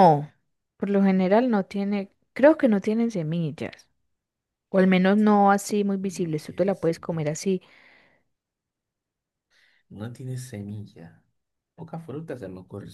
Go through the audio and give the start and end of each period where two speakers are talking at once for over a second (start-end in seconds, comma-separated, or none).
6.0-7.4